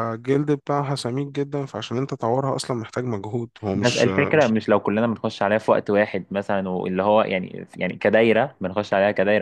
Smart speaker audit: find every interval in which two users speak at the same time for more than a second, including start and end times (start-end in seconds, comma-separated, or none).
none